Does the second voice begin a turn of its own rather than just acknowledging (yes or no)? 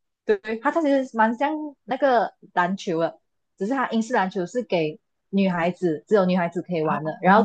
yes